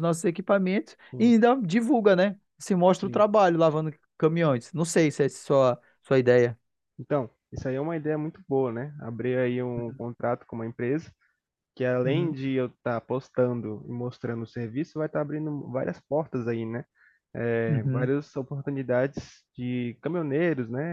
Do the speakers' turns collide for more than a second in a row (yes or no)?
no